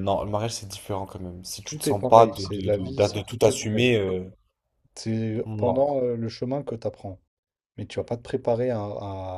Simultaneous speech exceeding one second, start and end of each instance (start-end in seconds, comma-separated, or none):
1.6-3.9